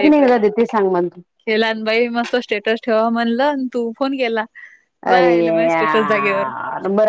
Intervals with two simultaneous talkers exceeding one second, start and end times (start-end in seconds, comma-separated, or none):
5.1-6.5